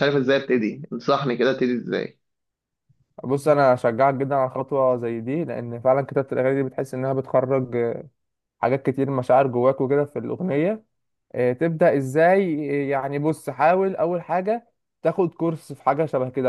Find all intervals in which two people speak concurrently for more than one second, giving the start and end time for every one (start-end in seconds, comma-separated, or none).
none